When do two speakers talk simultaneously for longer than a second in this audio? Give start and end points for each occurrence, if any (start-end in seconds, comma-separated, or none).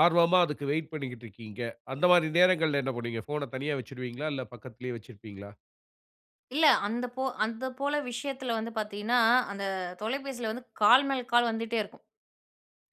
none